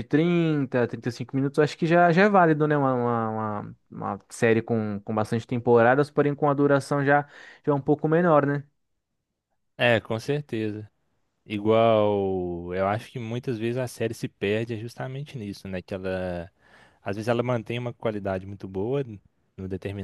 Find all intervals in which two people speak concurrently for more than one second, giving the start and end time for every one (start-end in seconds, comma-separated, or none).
none